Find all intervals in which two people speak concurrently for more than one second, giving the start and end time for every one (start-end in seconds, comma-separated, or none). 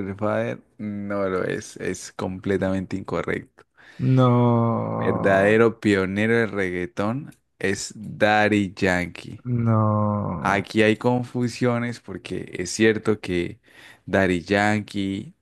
none